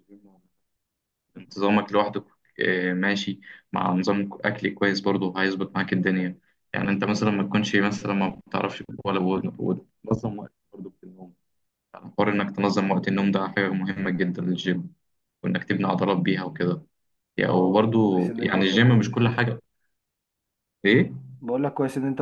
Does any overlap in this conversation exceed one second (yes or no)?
yes